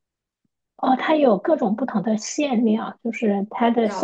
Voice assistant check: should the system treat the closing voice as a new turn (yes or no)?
no